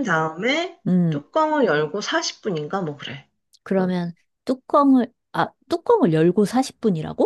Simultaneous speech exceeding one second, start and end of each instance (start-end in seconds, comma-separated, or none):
none